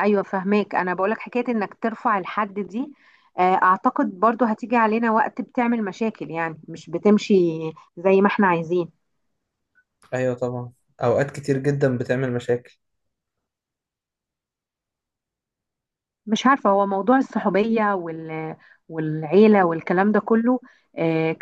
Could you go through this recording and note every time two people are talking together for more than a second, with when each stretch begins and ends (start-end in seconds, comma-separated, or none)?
none